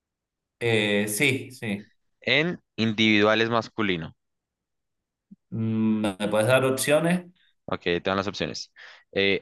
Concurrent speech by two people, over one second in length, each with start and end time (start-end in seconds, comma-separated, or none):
none